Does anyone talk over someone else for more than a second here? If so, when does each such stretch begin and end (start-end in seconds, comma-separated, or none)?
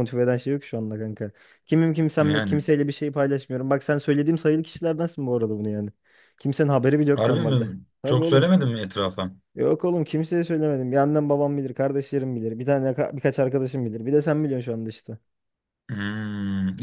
7.1-8.5